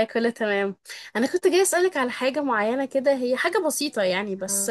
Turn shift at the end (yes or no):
no